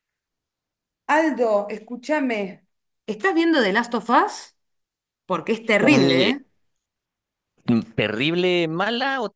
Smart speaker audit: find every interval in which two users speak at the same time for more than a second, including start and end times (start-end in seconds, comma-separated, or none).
none